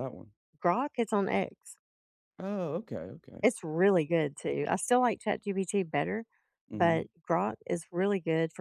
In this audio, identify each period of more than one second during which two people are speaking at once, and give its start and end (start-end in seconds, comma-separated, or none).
none